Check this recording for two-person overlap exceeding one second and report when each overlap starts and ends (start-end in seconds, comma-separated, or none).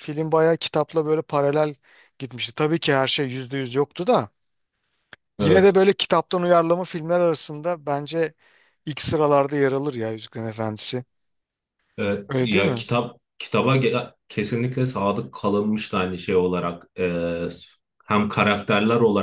none